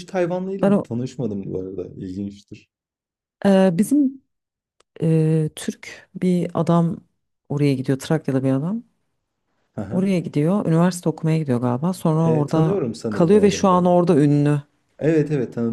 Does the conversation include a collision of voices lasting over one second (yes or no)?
yes